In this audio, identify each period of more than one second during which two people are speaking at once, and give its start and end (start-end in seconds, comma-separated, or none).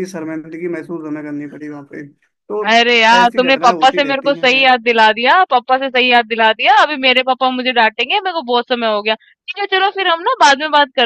3.2-4.7